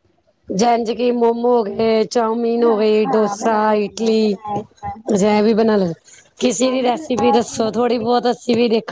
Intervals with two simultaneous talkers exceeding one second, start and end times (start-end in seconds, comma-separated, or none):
2.5-4.3, 6.6-8.2